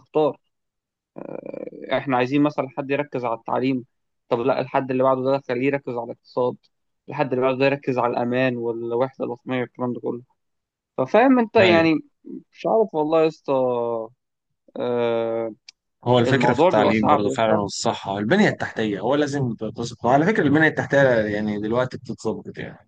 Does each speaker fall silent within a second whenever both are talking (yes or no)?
no